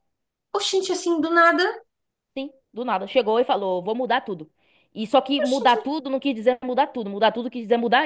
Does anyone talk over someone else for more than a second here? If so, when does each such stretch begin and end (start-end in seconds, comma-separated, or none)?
none